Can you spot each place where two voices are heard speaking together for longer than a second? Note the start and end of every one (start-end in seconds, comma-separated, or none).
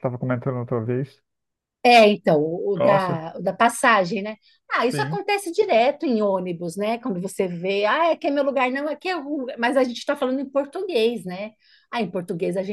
none